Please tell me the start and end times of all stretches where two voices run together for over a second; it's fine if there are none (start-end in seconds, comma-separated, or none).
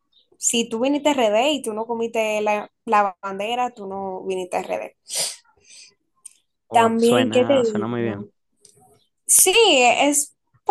6.7-8.2